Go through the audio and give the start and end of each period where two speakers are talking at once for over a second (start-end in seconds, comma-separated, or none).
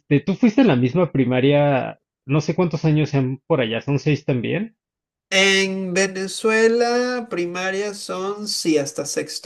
none